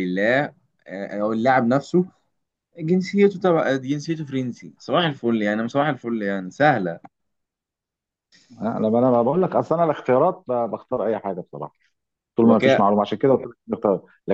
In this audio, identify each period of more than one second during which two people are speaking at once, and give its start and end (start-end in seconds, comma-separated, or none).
none